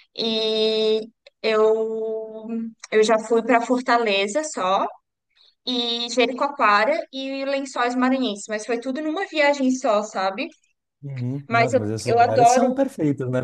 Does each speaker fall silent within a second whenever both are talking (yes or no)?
no